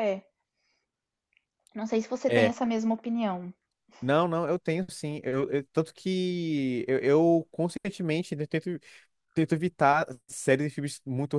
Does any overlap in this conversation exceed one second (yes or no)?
no